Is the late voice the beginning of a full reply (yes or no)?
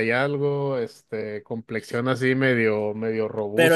yes